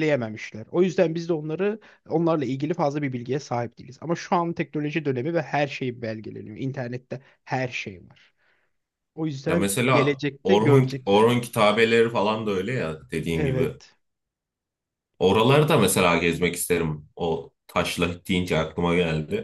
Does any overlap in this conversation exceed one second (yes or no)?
yes